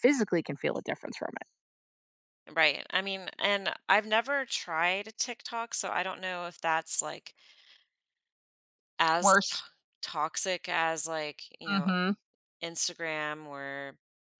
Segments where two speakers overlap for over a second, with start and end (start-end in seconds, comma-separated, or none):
none